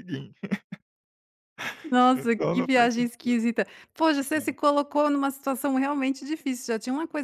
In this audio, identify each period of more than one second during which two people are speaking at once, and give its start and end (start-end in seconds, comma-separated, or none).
2.1-3.4